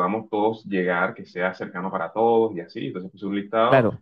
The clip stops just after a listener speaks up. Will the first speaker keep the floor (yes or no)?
no